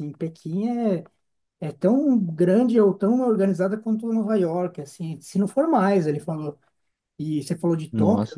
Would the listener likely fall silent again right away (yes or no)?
yes